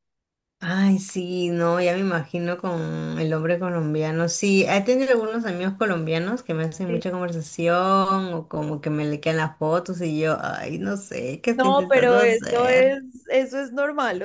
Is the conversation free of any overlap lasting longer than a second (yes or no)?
no